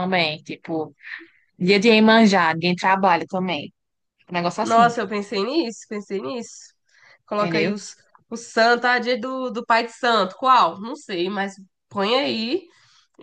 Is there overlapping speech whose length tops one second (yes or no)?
no